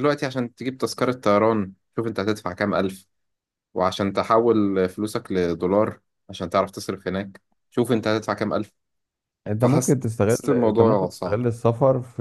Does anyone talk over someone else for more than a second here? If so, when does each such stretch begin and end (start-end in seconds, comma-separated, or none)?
9.6-11.4